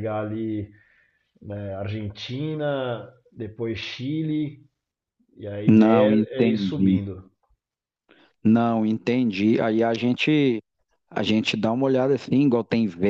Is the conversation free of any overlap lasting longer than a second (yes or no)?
no